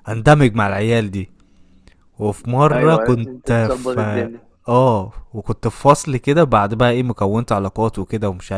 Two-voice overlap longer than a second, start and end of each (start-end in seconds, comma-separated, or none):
2.7-4.3